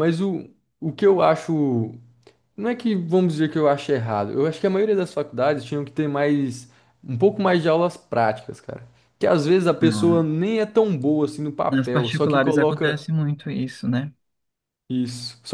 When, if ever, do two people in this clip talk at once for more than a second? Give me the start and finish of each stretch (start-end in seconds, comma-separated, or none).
11.7-13.0